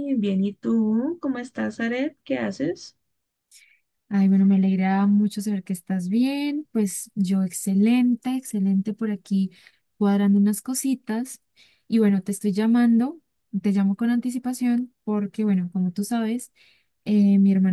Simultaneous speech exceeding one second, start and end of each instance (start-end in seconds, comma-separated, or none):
none